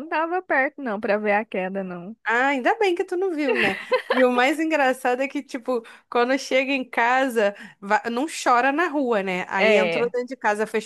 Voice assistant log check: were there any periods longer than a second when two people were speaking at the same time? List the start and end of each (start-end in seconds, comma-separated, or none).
none